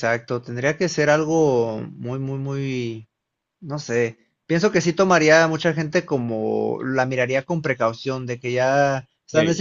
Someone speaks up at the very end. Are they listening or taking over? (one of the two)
listening